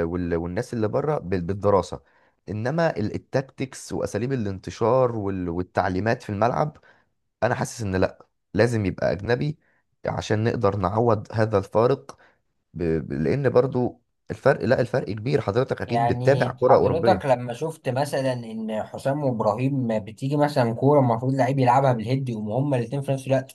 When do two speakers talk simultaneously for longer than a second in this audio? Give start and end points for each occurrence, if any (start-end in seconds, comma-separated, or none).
15.8-17.4